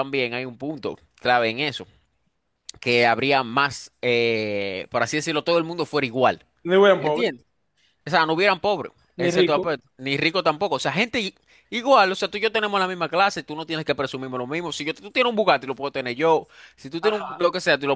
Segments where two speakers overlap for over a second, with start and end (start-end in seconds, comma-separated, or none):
none